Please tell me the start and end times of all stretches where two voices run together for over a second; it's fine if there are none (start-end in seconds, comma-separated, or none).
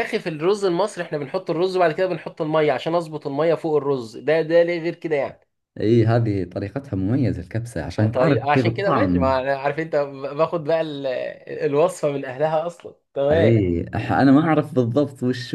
8.0-9.4